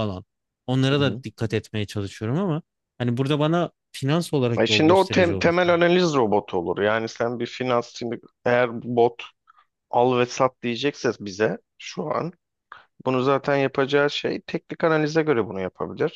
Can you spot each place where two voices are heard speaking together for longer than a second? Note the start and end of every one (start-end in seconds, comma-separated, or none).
4.6-5.8